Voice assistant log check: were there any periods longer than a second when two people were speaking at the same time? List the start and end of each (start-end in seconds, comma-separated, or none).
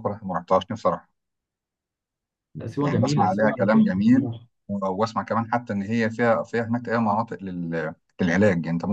2.8-4.3